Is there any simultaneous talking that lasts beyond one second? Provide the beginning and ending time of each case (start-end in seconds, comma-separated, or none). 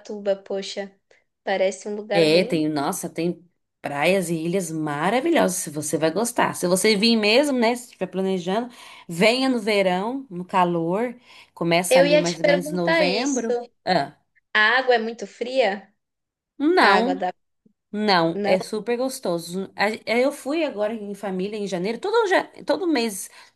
11.9-13.5